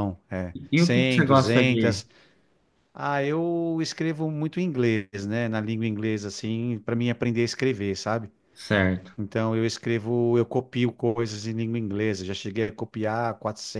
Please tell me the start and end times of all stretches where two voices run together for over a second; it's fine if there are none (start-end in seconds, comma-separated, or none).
0.7-2.0